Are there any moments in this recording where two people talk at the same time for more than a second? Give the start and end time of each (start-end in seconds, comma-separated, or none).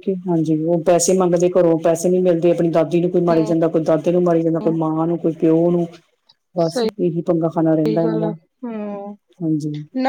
none